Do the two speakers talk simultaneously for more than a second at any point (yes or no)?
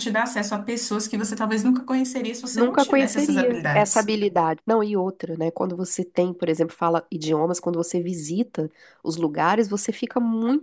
yes